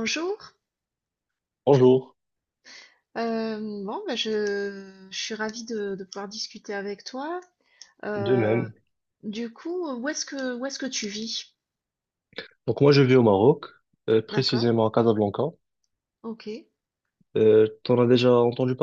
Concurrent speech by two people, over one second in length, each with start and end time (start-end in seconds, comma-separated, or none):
none